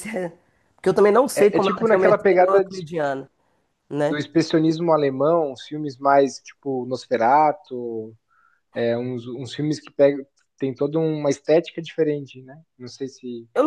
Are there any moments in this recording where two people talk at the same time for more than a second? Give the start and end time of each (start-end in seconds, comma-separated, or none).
1.4-2.8